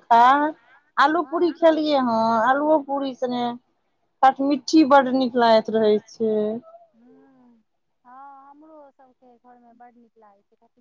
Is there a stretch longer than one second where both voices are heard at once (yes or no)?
no